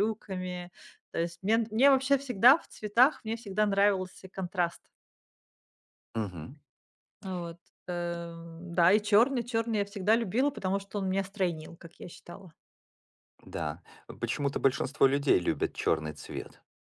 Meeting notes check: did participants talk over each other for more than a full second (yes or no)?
no